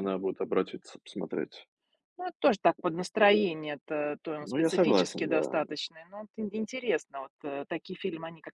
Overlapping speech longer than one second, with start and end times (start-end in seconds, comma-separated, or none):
4.4-5.6